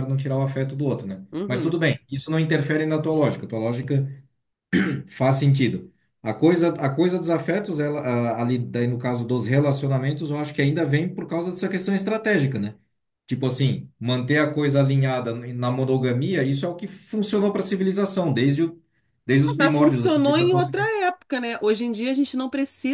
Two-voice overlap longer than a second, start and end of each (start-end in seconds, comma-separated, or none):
19.5-20.9